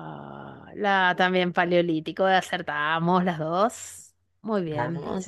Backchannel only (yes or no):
yes